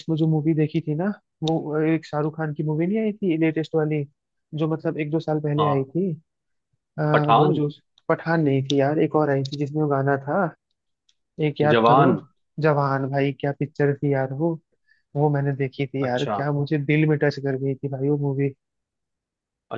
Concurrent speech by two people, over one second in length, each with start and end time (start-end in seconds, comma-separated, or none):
none